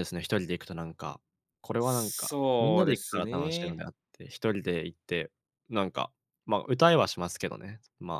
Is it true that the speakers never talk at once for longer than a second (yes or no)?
no